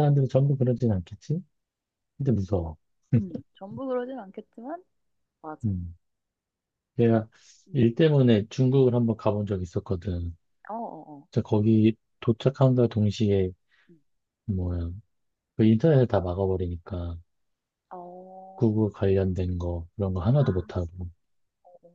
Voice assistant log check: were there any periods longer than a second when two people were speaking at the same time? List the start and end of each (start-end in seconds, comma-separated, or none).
none